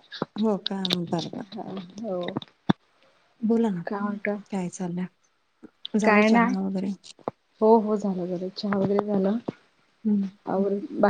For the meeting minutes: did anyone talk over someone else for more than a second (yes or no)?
no